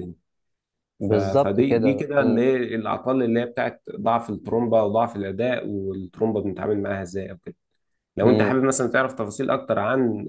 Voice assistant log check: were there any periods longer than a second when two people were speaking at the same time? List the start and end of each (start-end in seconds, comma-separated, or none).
1.0-2.4